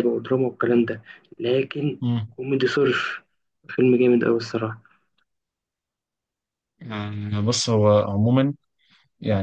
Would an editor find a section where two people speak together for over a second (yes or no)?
no